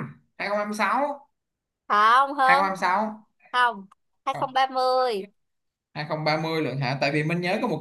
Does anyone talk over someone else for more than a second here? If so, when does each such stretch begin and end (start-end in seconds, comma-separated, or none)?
none